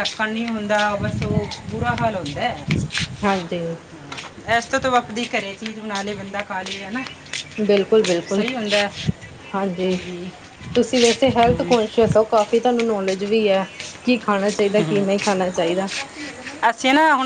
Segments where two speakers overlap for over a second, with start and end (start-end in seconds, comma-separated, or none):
none